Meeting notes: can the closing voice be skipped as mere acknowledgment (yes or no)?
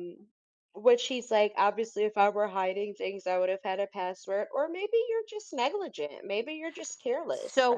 no